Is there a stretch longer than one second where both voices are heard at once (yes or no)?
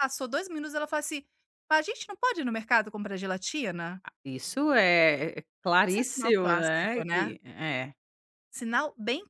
yes